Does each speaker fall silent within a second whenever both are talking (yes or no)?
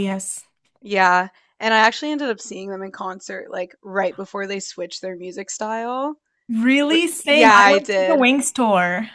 no